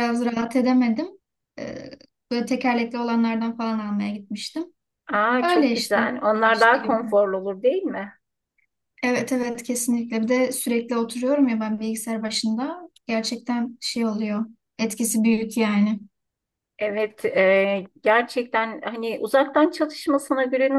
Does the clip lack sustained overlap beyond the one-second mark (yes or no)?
no